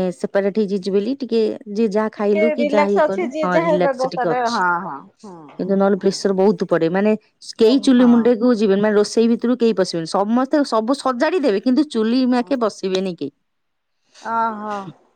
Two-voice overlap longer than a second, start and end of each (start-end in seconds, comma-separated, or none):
2.1-4.6